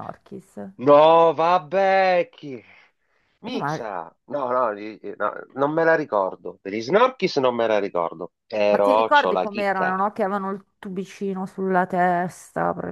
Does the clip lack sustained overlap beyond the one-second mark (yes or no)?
no